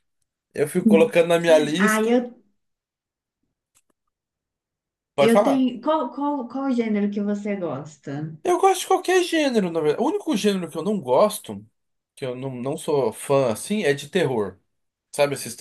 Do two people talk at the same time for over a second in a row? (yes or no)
no